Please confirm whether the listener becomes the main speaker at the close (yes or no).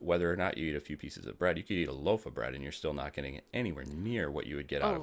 no